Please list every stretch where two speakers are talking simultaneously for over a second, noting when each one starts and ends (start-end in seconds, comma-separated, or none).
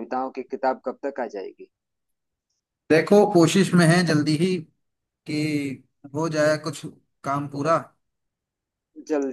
none